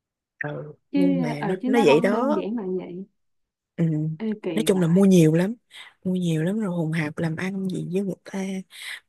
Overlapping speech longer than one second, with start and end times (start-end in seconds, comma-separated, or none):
0.9-2.4